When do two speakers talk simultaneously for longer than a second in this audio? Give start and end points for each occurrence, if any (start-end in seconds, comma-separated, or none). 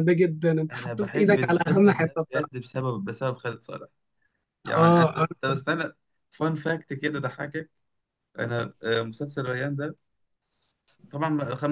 0.7-2.7